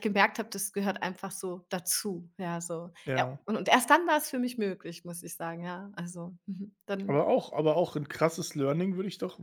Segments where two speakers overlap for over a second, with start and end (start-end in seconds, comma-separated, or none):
none